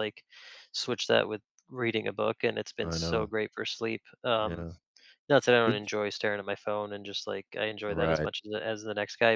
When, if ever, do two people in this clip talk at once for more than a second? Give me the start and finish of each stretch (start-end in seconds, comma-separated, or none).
none